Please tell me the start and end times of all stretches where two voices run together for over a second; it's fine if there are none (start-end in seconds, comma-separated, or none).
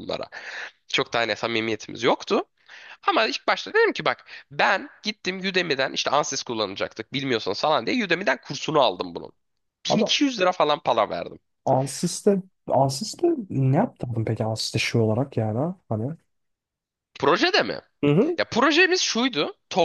none